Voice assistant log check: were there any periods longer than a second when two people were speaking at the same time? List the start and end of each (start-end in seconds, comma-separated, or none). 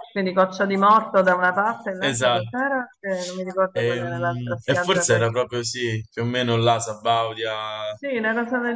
3.8-5.3